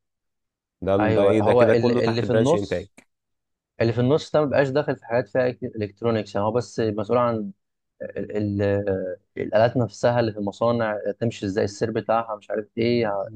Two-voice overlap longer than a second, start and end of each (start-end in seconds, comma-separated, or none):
1.0-2.9